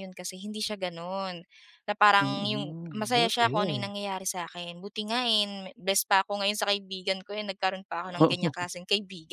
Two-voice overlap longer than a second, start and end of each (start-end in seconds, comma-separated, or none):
2.2-3.9